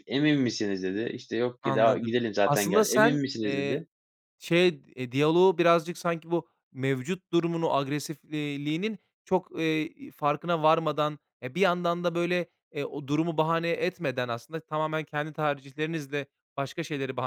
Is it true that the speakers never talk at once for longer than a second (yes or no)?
no